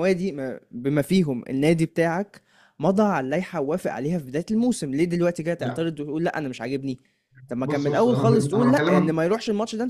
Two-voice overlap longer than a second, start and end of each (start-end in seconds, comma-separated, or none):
7.6-9.1